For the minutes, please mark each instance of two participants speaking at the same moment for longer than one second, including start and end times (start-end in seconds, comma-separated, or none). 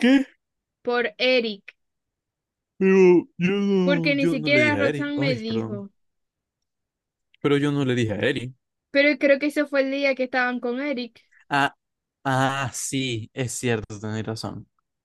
3.8-5.8